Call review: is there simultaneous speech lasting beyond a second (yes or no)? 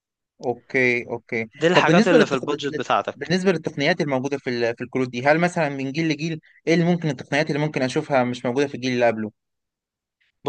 yes